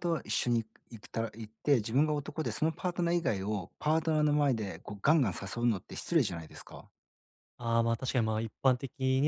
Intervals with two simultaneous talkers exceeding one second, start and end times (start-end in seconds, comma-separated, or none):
none